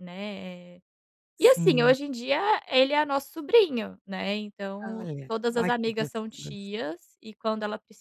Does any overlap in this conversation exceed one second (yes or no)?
yes